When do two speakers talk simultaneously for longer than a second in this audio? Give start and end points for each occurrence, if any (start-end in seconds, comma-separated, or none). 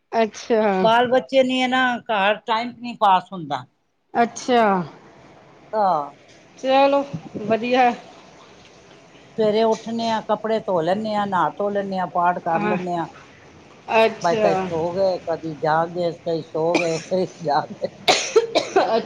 none